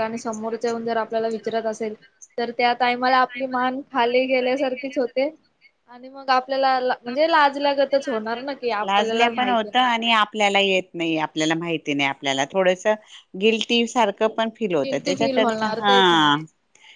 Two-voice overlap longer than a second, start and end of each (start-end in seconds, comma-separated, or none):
8.9-10.1, 14.8-16.3